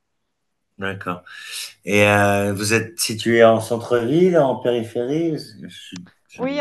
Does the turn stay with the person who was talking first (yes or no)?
no